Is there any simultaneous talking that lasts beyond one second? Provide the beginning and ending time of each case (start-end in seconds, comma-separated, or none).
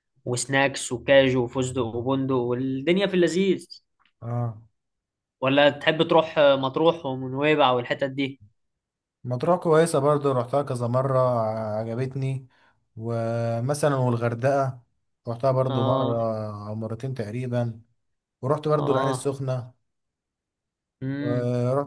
none